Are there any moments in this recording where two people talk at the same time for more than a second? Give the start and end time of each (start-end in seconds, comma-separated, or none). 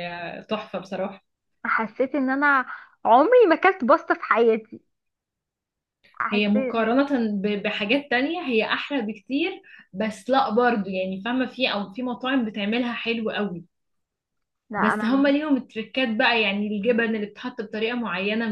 none